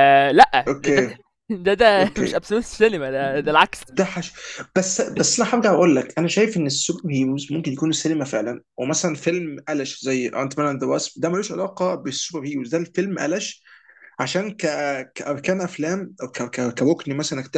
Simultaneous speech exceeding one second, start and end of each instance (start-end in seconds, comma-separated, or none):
none